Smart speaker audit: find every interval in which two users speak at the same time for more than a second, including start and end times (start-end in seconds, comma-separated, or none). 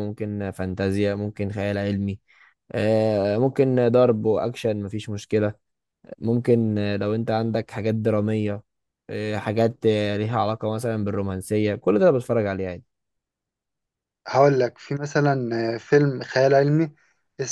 none